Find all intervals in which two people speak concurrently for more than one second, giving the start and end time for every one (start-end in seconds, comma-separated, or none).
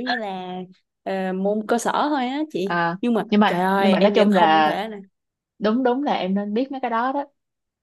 2.6-4.7